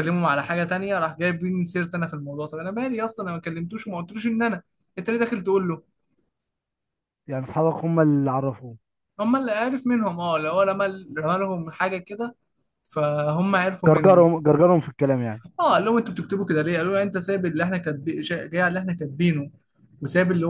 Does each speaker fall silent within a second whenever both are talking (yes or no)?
yes